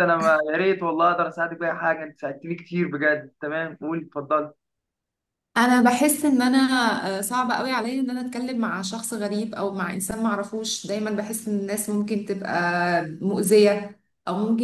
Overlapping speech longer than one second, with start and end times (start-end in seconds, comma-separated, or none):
none